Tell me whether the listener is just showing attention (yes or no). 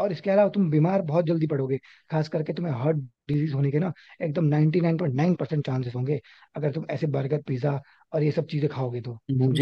no